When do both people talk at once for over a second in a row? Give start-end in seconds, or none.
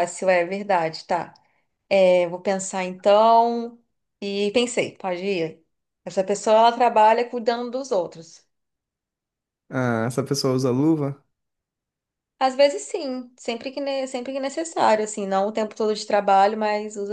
none